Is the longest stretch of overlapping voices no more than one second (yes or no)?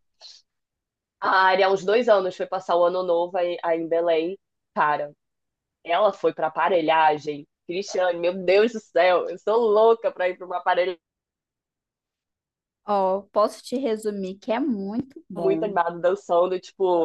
yes